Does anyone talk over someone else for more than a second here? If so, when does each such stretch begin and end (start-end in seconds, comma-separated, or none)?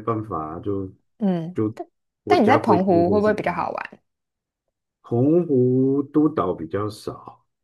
2.3-3.7